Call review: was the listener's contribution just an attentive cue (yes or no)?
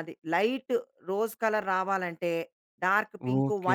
no